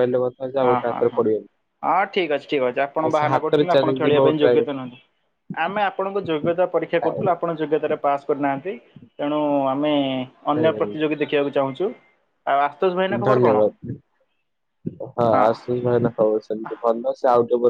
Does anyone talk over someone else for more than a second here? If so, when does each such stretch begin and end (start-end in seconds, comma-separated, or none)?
3.2-4.6